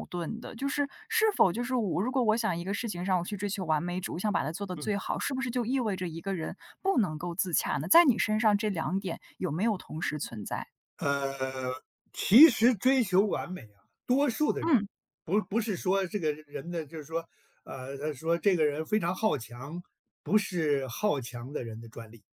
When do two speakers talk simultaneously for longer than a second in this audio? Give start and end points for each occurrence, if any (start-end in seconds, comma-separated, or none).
none